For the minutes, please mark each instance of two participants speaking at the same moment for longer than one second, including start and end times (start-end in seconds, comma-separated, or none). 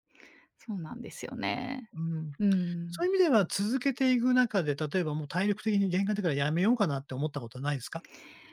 none